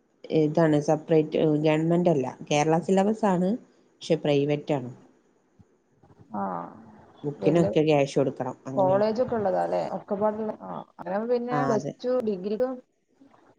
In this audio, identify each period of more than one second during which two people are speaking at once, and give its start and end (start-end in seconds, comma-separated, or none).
none